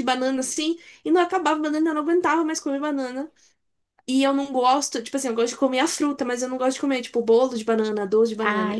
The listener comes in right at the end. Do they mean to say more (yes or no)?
no